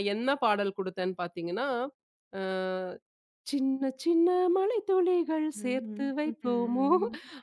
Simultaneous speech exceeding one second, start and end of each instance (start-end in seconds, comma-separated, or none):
5.6-6.9